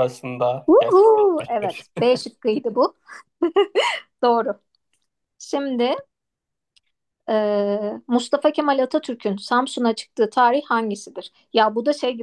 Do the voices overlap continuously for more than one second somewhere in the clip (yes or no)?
yes